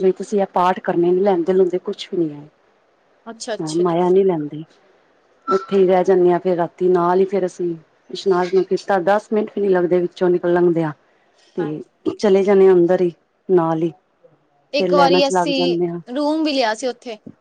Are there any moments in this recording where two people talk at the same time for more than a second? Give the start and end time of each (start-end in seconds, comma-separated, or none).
none